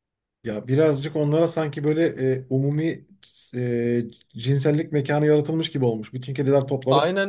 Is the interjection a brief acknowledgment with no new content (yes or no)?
no